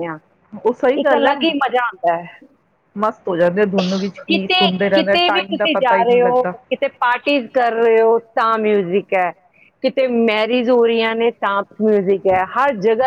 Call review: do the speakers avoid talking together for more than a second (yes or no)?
no